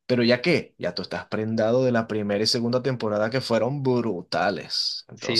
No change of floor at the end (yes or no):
no